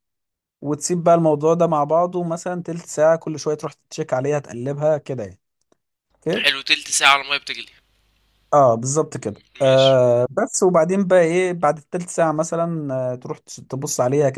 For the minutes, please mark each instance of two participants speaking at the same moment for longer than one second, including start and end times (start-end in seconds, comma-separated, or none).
none